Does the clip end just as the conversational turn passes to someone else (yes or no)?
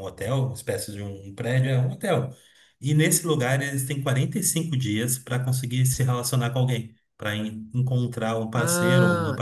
yes